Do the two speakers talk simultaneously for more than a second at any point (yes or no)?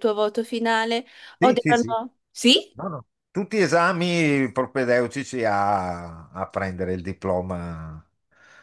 no